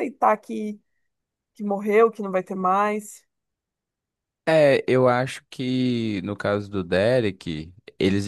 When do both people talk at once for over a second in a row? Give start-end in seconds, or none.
none